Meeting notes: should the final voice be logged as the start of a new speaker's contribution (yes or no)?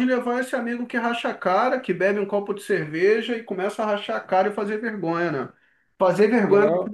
no